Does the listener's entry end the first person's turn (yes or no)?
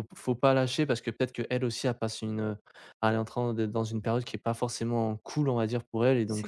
no